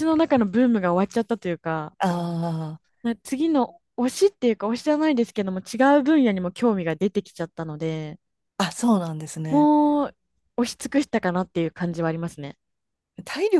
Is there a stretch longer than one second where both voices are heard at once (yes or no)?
no